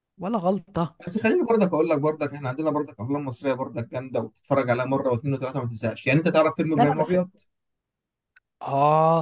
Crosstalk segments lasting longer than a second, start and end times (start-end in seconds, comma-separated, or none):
none